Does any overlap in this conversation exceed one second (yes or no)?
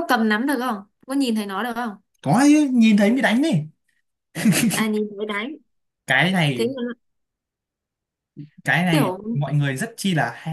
no